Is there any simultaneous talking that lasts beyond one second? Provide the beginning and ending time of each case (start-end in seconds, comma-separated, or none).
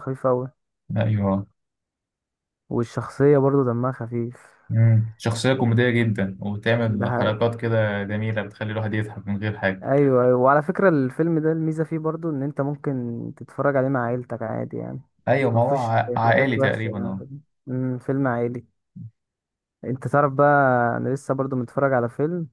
15.5-17.2